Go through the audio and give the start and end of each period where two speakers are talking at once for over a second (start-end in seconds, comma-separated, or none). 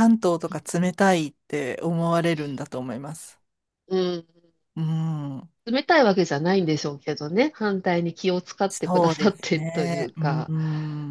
8.7-10.5